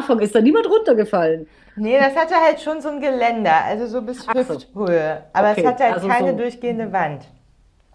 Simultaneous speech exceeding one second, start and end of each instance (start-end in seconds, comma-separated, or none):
5.3-7.0